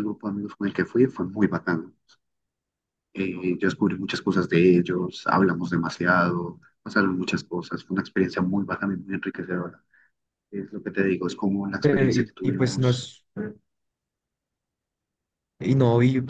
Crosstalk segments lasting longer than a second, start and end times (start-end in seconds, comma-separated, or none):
11.8-13.1